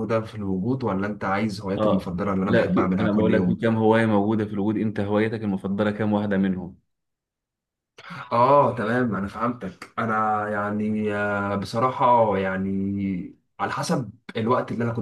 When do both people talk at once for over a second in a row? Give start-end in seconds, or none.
1.8-3.6